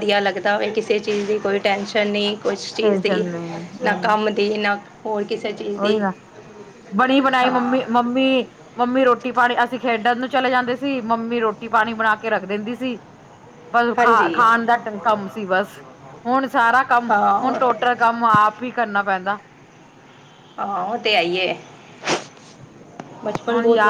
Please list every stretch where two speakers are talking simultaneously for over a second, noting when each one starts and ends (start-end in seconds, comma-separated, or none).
none